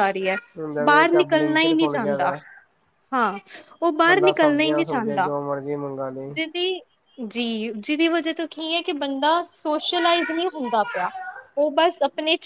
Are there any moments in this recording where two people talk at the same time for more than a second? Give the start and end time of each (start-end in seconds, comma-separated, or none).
0.8-2.3